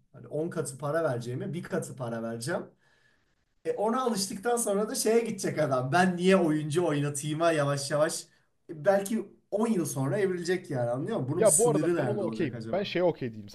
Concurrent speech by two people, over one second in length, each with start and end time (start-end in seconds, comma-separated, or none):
11.4-12.9